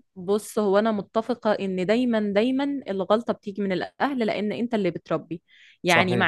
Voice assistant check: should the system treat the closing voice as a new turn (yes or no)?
no